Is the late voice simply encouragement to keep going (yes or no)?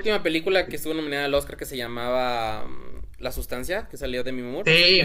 no